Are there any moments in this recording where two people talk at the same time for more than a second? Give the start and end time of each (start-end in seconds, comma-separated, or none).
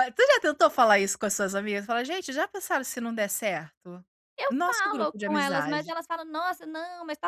4.5-5.9